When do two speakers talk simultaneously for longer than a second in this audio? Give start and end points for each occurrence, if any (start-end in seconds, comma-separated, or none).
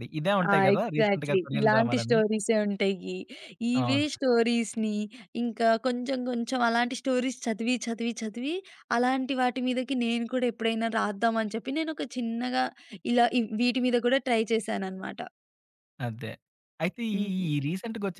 0.5-2.2